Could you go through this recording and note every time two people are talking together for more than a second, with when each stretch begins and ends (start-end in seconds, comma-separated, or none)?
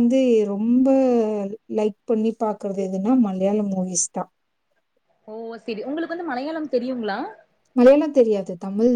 none